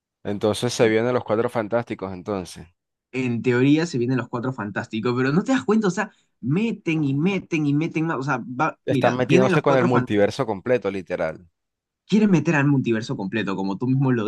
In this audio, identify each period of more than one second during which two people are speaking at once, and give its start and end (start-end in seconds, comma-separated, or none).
8.9-10.3